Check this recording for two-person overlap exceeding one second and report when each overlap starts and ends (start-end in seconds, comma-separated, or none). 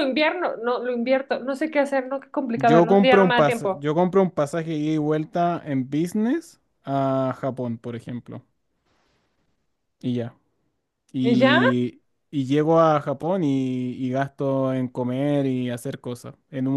2.5-3.9